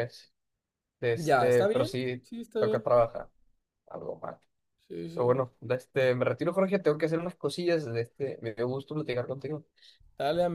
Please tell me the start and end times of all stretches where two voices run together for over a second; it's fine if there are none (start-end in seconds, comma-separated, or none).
1.1-2.8